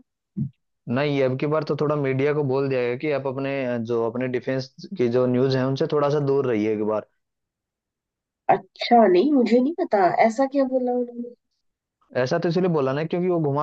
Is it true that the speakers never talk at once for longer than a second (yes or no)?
yes